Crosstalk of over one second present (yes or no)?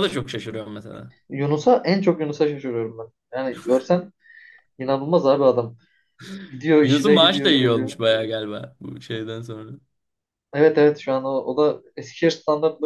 yes